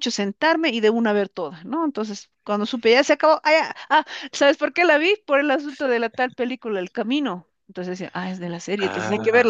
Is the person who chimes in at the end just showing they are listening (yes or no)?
yes